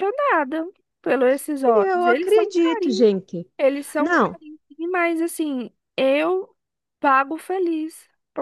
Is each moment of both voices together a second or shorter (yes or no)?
no